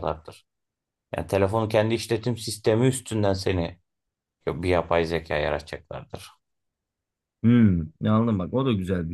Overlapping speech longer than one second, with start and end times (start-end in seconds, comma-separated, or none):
none